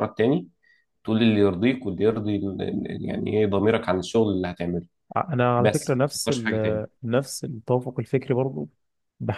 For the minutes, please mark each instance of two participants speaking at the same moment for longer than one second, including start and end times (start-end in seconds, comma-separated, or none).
5.6-6.9